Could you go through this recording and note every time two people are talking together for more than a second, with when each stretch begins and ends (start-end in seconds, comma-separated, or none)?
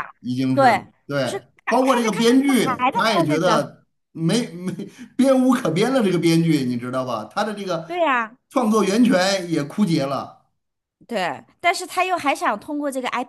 0.5-3.7